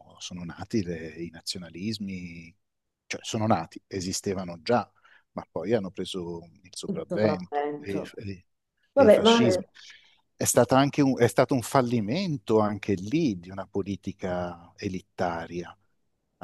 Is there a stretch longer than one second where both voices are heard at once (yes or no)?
yes